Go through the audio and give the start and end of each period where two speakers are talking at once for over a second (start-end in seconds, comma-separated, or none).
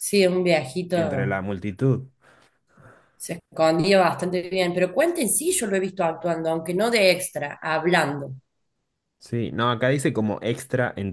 none